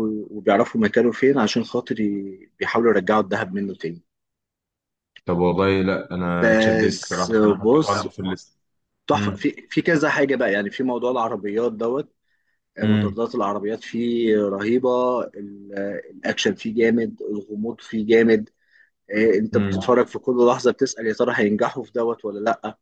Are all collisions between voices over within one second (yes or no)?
no